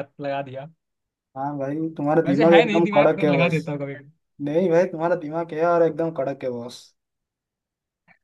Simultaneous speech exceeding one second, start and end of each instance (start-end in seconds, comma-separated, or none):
2.2-3.6